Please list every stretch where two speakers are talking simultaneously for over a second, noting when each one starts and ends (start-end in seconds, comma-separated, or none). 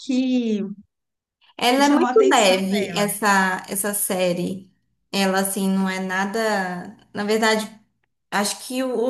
1.7-3.1